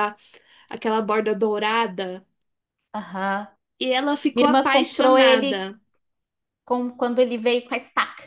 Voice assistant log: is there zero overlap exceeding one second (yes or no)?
no